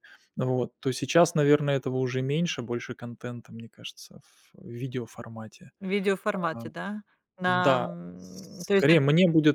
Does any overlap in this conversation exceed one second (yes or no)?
yes